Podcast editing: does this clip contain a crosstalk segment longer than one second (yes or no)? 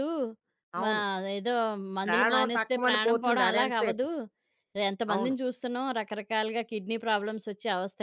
yes